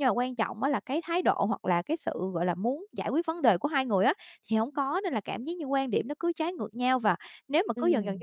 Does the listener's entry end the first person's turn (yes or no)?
no